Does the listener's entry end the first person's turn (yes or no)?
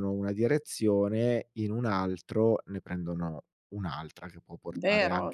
yes